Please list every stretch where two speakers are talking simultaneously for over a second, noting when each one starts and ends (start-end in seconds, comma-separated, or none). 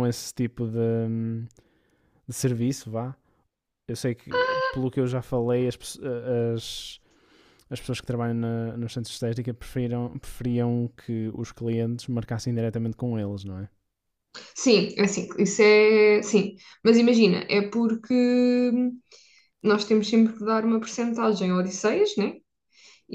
none